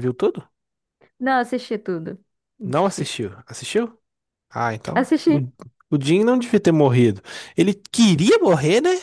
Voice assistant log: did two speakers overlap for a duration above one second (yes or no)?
no